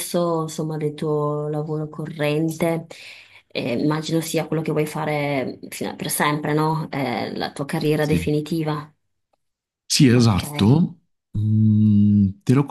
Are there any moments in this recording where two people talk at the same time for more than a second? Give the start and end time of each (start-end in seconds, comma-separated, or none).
none